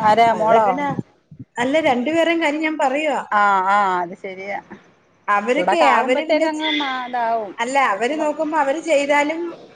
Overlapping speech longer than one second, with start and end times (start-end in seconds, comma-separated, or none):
5.5-7.5